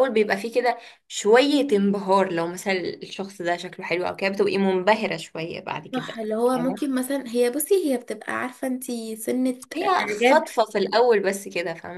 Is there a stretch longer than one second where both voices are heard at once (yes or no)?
no